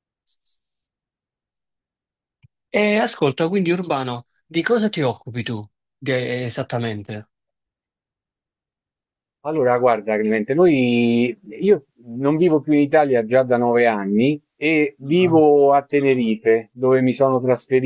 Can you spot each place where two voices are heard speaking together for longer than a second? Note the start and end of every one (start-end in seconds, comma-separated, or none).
none